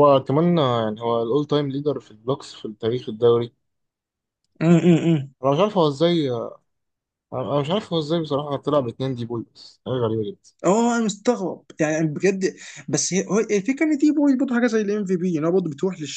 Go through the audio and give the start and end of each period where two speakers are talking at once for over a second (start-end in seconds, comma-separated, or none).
none